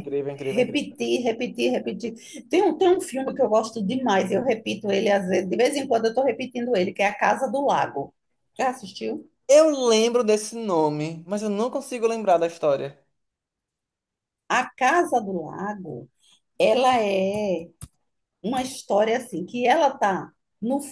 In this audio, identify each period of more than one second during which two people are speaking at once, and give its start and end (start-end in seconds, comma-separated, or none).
none